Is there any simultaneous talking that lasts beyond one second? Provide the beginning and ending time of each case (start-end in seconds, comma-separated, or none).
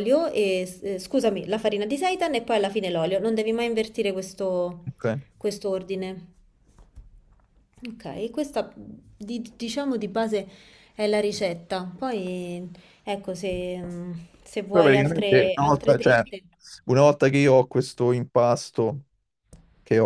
14.7-16.2